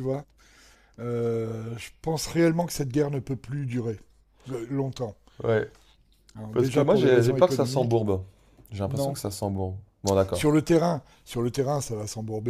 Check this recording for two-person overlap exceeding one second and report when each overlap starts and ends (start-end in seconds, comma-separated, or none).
6.5-8.0